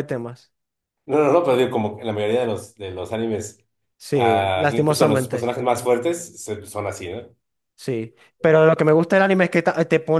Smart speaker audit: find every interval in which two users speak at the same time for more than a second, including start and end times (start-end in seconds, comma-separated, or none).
4.1-5.5